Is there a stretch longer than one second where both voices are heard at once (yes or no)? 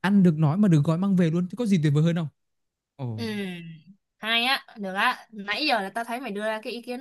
no